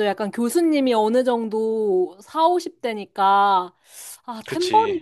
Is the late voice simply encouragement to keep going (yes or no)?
yes